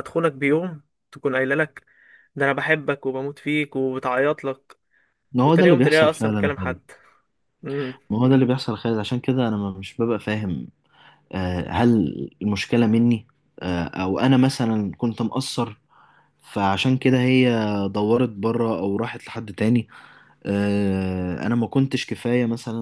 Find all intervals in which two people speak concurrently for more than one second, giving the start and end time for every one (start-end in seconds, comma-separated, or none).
5.4-6.8